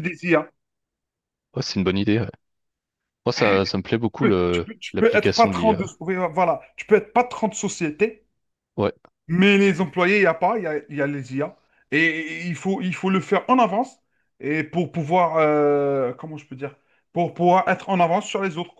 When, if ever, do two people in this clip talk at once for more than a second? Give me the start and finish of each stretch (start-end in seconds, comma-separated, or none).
4.2-6.0